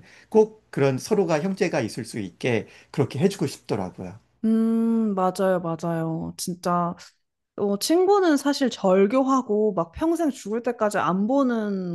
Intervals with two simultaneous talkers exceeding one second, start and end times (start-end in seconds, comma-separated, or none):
none